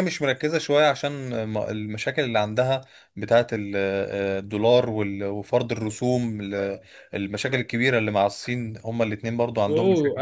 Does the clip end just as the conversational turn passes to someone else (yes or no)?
yes